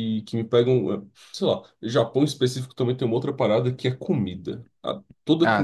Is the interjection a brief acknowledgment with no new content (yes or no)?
yes